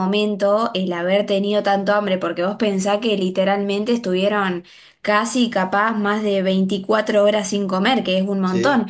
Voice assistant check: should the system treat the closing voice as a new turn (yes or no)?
no